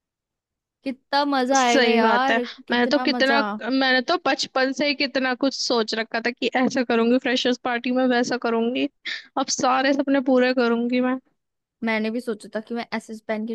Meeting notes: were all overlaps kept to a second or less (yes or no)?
no